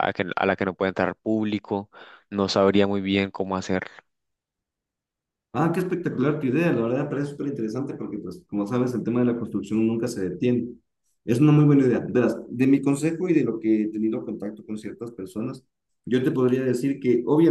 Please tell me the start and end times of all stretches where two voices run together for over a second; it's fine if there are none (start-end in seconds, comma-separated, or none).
none